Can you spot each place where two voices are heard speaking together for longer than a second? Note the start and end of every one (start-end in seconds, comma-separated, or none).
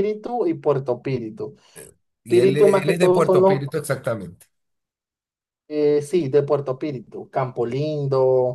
2.3-3.6